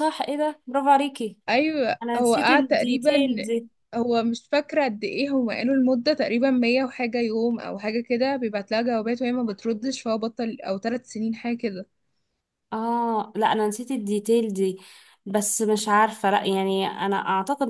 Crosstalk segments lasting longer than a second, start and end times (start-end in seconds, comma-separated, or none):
2.0-3.4